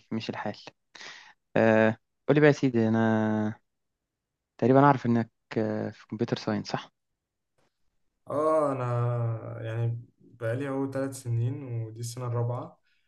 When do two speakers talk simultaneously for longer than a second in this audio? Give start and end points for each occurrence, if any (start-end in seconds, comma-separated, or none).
none